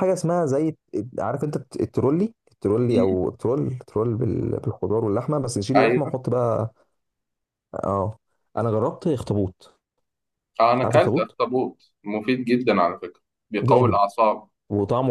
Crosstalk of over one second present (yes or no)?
no